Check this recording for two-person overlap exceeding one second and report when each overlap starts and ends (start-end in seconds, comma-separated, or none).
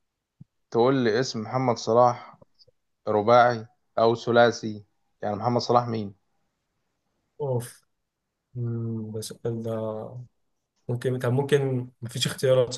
none